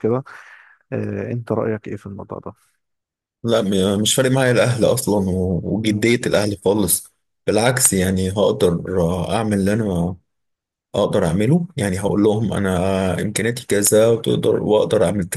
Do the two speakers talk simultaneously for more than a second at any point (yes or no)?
no